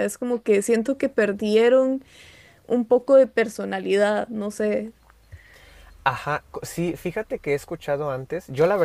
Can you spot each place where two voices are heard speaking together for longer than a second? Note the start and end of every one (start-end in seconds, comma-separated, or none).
none